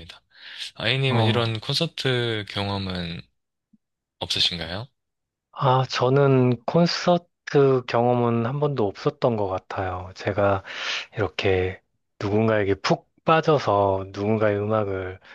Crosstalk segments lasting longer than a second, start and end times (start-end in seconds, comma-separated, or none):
none